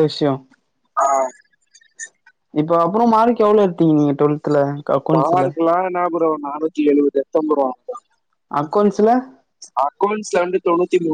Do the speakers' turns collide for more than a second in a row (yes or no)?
no